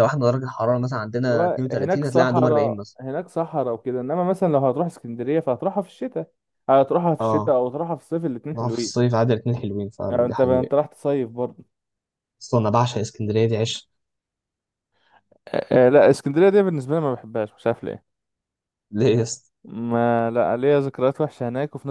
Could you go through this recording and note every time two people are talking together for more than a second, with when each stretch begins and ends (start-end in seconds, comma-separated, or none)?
1.3-3.0